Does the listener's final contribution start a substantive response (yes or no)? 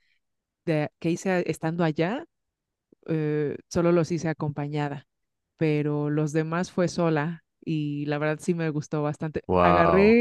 no